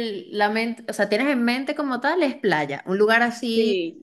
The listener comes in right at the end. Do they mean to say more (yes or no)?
yes